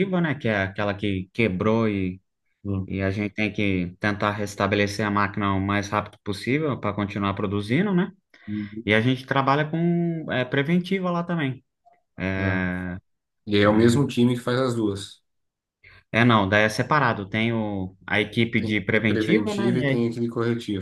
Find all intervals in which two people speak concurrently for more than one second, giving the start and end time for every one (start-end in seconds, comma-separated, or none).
18.6-20.1